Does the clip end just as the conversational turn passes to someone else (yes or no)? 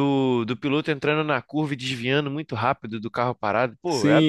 yes